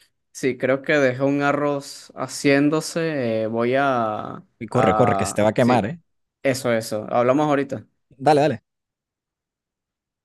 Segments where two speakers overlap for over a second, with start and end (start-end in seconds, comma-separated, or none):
4.6-6.0